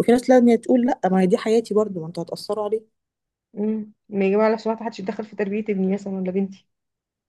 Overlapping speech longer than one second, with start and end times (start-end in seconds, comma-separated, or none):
none